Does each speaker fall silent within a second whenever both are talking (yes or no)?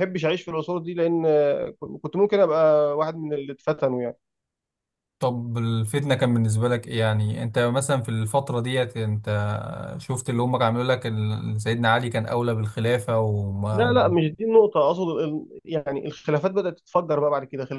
yes